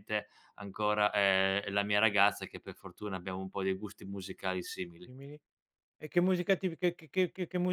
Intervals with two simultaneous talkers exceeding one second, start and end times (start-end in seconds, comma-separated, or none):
none